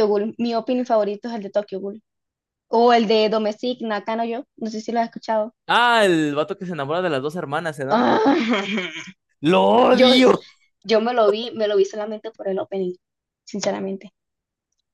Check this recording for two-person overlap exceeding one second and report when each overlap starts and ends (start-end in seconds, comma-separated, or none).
none